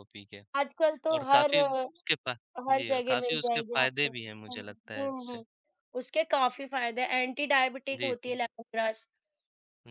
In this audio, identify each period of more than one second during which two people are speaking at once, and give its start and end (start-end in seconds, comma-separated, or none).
2.7-5.4